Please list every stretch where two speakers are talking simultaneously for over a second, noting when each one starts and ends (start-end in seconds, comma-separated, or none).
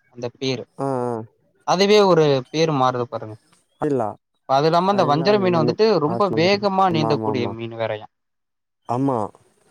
5.1-7.5